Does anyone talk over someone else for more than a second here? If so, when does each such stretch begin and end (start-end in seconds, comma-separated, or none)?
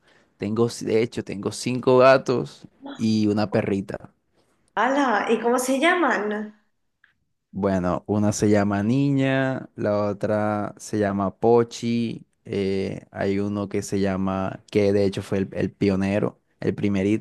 none